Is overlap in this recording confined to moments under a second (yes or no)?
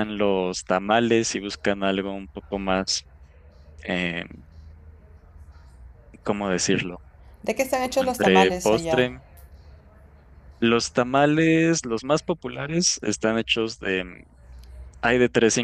no